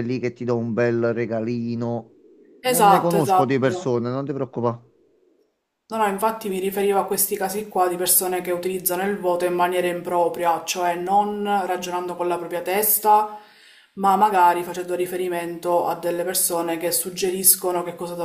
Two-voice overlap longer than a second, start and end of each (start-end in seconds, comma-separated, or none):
2.6-4.0